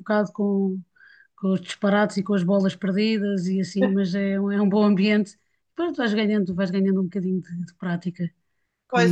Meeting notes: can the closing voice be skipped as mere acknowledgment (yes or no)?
no